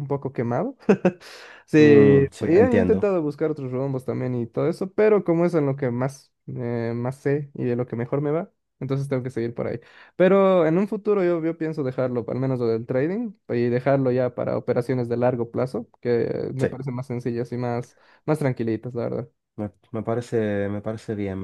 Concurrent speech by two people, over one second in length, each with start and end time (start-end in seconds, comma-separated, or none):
1.8-3.1